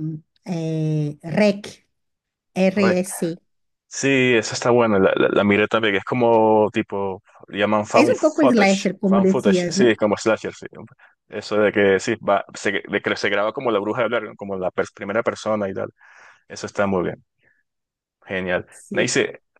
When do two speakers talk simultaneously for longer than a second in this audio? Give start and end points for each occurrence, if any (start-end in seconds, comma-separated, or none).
7.9-9.9